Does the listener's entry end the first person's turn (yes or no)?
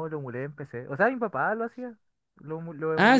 yes